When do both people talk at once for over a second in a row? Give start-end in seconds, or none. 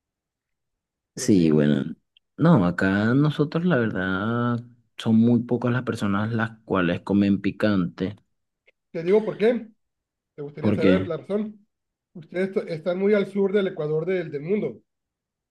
none